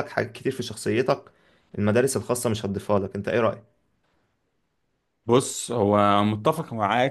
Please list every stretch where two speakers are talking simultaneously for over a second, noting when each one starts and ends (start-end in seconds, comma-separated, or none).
none